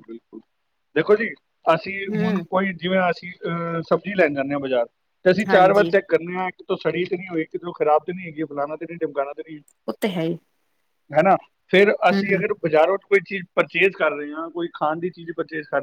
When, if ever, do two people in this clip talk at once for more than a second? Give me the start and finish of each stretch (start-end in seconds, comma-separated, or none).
none